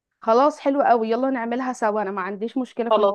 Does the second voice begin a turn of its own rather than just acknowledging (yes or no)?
yes